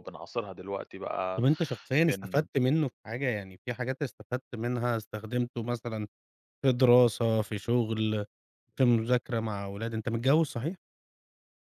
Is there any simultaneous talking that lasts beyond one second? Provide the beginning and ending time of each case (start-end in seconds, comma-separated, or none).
none